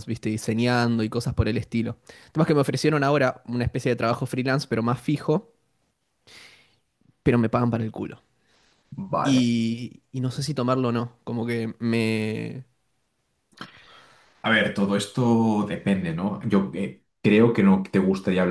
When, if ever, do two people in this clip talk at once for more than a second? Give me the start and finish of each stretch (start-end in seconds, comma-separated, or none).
none